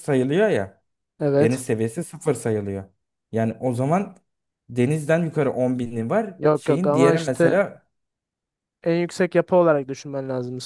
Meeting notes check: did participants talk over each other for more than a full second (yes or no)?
yes